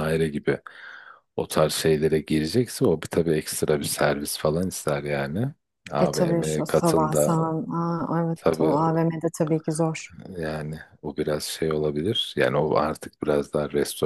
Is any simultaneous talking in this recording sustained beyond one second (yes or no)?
yes